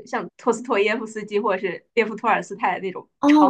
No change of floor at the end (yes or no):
no